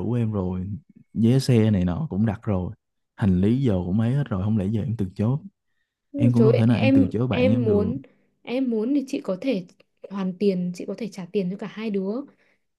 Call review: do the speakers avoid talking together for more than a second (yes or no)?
no